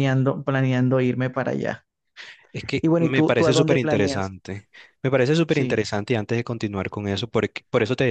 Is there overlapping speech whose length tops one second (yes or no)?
yes